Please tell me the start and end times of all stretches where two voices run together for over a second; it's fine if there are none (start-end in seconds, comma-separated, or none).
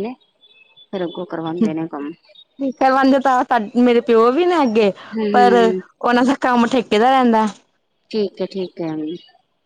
none